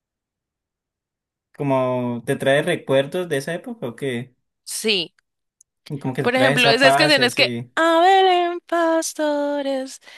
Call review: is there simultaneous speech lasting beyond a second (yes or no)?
yes